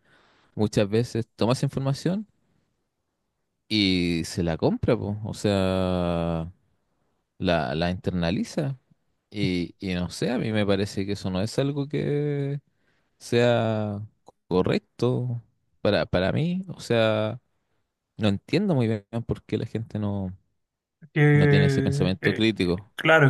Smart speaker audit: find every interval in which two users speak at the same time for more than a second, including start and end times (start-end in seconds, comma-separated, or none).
21.3-22.5